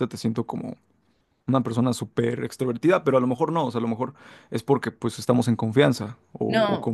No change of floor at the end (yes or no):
no